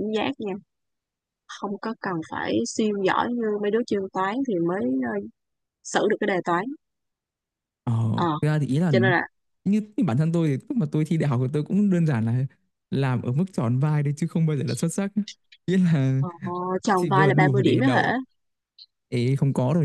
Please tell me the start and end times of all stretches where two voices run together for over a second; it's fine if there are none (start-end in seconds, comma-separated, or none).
16.8-18.1